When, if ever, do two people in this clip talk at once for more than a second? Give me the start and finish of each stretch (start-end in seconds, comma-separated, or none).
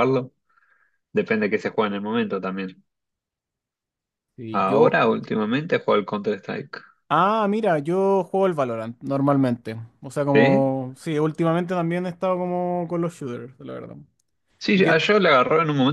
none